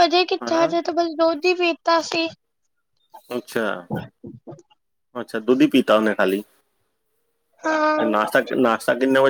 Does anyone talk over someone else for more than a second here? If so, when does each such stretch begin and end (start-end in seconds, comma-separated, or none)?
none